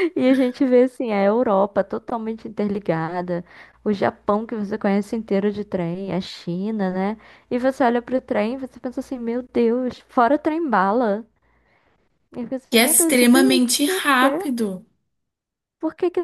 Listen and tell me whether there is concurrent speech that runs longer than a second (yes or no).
yes